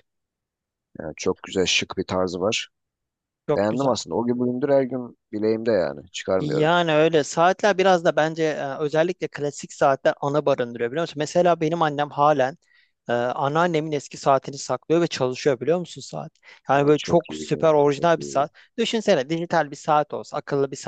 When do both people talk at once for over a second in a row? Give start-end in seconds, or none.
16.7-18.5